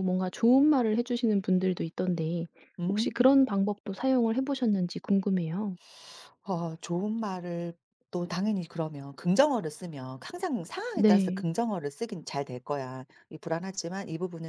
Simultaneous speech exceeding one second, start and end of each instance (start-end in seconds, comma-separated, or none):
none